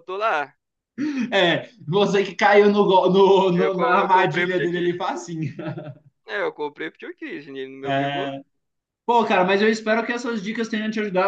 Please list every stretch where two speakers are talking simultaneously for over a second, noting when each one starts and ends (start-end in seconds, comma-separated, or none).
3.5-5.0